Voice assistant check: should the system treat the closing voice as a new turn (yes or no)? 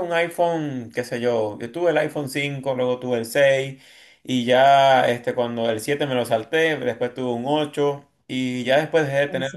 no